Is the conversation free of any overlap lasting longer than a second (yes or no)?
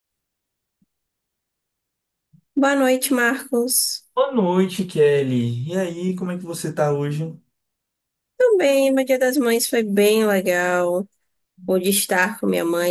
yes